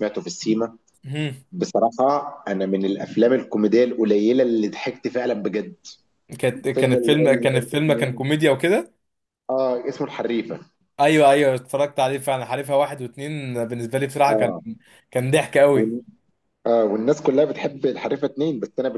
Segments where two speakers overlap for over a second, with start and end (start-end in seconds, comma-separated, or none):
6.7-8.3